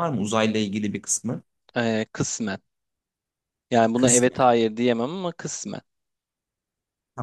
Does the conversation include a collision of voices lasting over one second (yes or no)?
no